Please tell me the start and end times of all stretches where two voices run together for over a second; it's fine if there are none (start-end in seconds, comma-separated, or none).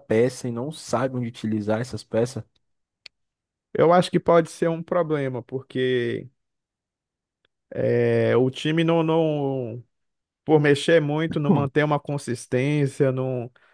none